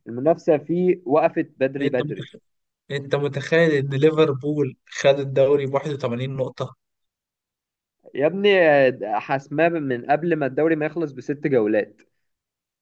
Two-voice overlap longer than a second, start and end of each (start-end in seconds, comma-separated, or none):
none